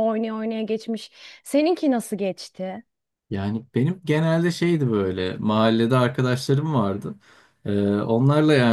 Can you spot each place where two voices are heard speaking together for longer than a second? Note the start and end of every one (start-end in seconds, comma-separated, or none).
none